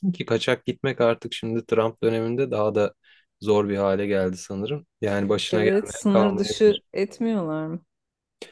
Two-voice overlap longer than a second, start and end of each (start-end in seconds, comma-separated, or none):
5.5-6.8